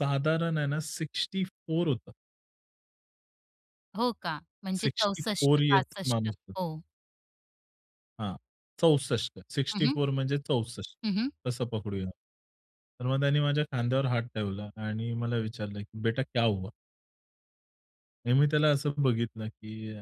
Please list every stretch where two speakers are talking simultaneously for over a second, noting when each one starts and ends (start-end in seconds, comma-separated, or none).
4.7-6.6